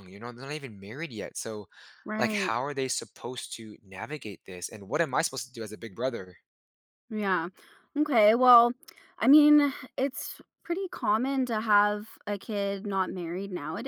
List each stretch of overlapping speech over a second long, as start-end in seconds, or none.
none